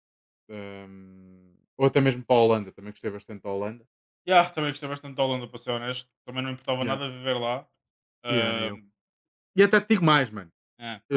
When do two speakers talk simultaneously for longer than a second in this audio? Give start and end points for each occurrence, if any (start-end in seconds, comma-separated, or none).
none